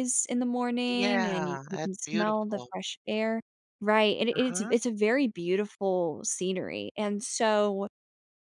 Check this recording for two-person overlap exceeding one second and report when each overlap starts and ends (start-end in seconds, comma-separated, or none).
0.9-2.7